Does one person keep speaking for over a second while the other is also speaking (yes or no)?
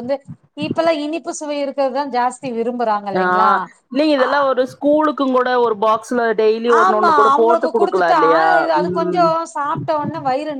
no